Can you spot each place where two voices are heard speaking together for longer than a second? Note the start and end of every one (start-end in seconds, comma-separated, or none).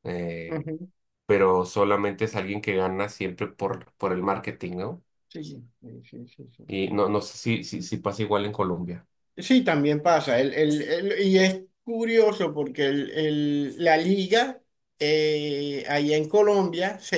none